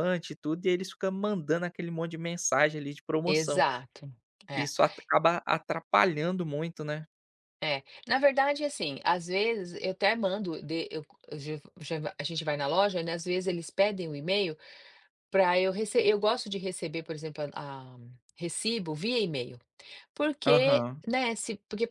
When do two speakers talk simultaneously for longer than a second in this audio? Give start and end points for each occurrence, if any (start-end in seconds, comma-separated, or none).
none